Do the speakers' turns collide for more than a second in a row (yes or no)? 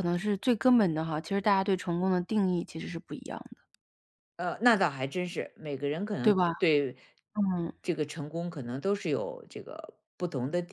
no